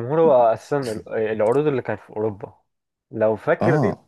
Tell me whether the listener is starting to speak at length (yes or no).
no